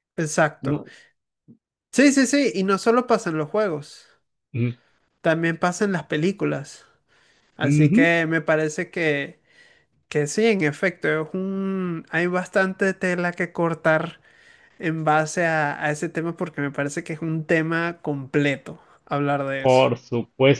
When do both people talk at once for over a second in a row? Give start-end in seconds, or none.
none